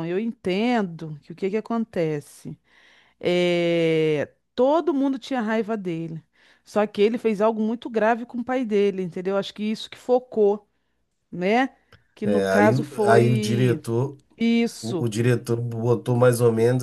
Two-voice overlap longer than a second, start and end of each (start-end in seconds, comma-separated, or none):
12.2-13.8